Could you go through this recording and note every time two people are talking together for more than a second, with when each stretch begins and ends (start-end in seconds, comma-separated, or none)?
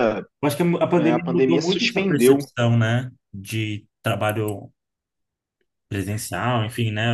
1.0-2.5